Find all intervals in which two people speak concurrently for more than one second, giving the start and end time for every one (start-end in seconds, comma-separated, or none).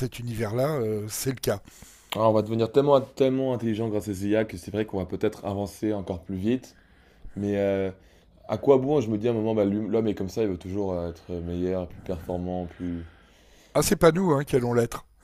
none